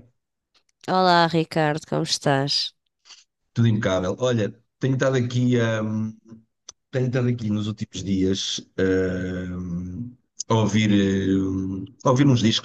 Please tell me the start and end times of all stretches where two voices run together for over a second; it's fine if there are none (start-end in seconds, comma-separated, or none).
none